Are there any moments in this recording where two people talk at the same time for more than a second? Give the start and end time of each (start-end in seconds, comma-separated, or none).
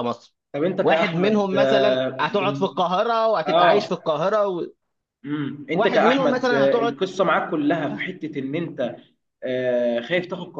0.8-2.7, 5.7-6.9